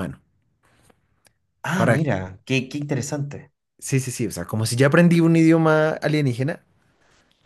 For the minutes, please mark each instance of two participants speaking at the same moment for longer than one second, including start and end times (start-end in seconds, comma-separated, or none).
none